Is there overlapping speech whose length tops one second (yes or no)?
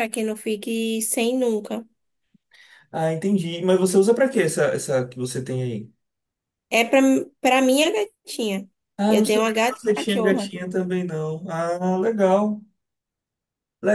yes